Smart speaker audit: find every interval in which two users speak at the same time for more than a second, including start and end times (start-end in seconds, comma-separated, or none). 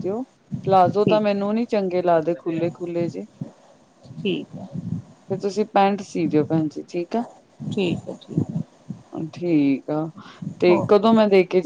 none